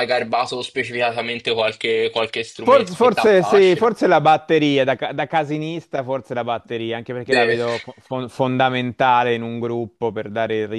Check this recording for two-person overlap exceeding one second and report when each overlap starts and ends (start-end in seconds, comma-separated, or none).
2.6-3.9